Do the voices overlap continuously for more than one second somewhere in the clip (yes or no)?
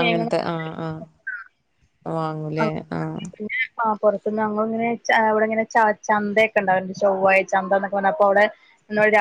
no